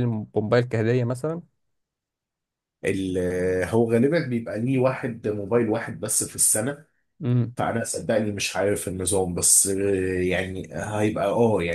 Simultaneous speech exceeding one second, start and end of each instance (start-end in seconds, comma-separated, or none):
none